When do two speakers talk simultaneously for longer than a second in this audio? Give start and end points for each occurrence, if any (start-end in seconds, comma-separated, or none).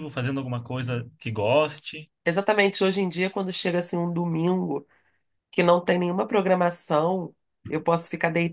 none